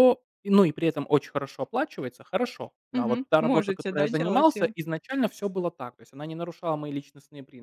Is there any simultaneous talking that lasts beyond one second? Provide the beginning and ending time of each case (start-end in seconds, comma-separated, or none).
2.9-4.7